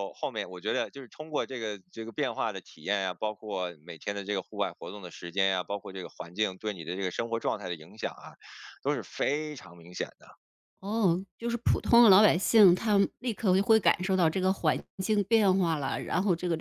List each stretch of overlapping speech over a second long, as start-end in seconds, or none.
none